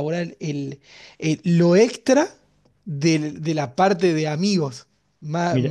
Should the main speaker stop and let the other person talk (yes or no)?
no